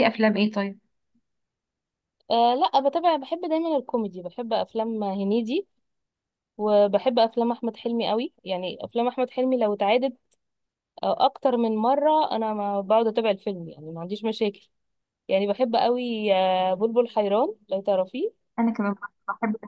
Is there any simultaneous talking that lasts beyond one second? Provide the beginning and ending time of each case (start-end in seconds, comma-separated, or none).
none